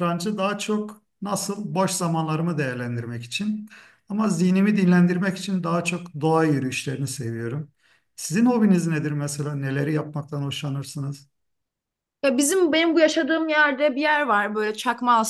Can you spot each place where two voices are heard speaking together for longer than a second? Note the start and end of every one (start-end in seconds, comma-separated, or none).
none